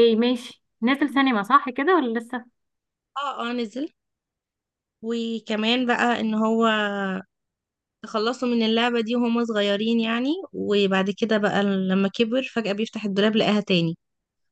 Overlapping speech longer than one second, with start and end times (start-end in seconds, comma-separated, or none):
none